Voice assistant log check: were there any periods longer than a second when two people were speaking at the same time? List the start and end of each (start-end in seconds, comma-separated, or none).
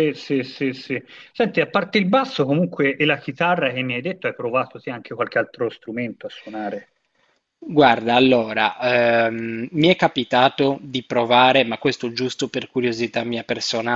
none